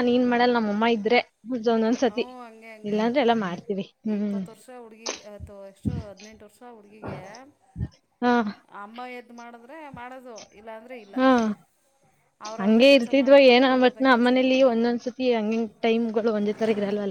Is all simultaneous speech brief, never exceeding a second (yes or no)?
no